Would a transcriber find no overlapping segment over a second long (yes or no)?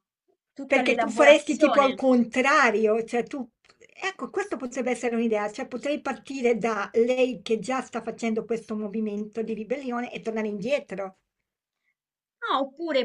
no